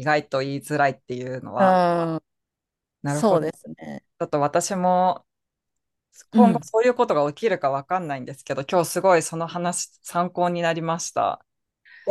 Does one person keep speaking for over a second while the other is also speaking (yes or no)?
no